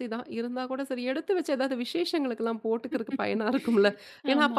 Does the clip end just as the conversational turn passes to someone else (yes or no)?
no